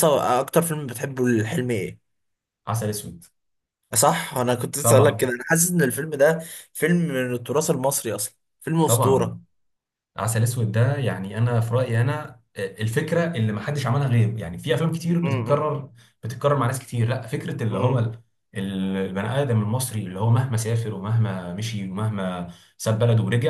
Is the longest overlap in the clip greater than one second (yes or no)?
no